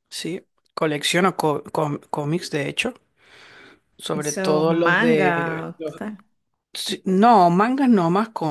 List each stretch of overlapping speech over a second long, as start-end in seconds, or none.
4.1-6.0